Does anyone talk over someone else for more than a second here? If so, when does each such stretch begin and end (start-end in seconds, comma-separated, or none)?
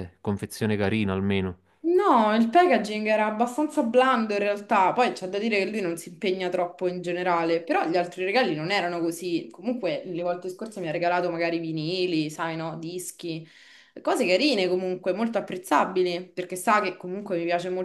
none